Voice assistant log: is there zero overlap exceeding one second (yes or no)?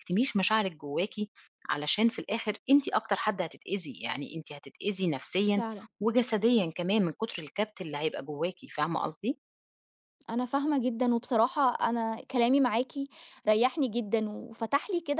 yes